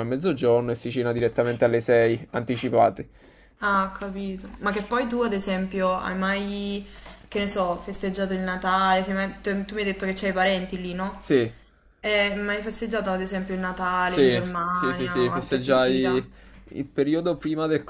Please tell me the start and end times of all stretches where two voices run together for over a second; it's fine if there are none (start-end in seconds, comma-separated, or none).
14.0-16.2